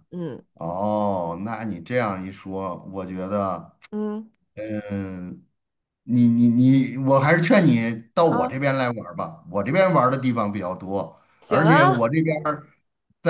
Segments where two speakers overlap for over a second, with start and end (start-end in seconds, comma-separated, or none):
none